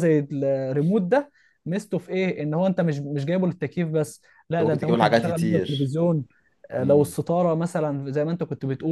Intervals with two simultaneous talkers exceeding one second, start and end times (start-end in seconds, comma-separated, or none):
4.5-5.9